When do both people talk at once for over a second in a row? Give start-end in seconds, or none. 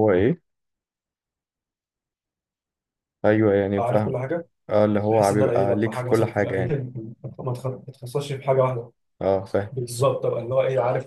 5.1-6.6